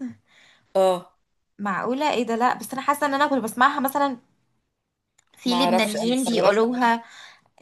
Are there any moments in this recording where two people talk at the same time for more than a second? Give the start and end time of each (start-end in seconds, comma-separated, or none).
5.5-6.7